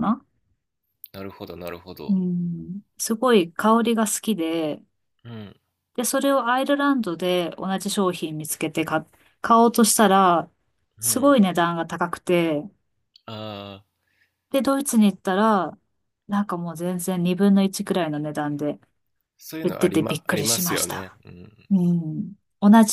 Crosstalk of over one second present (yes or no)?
yes